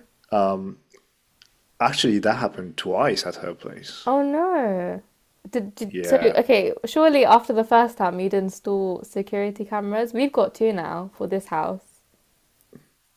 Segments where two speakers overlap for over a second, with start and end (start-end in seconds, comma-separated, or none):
none